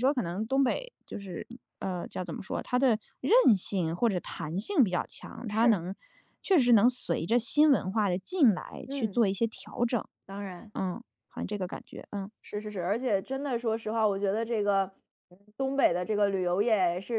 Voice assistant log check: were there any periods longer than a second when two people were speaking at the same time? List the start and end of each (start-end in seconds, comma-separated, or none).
none